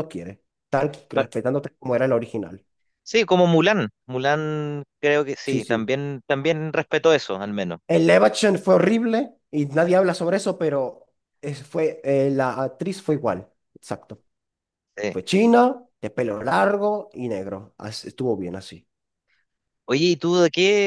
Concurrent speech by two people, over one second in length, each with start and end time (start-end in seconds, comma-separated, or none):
none